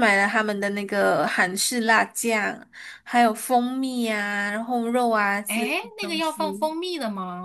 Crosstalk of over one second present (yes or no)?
yes